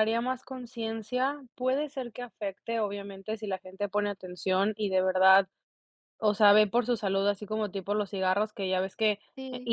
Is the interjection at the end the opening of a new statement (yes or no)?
no